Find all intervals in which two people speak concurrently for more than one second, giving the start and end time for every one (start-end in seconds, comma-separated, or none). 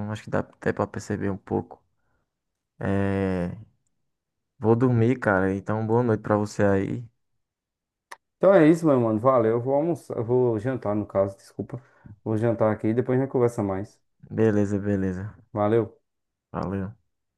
none